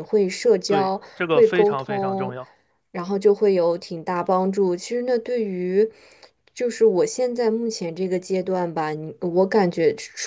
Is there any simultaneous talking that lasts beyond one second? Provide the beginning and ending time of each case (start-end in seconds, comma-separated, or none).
0.7-2.4